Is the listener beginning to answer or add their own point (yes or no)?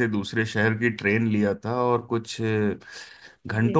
no